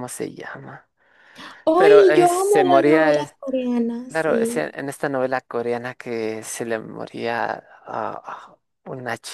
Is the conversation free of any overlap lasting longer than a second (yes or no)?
no